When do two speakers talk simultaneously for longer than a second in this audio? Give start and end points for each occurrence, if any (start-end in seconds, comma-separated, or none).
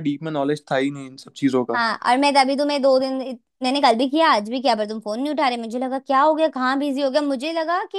none